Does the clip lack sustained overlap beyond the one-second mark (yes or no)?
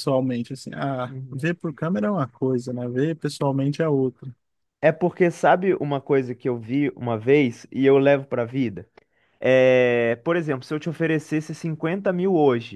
yes